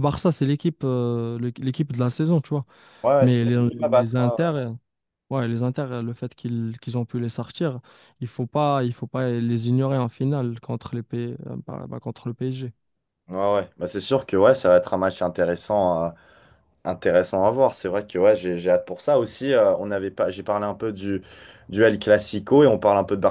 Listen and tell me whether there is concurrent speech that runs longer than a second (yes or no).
yes